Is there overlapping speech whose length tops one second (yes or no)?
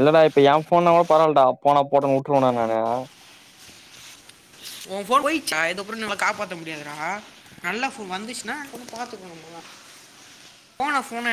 no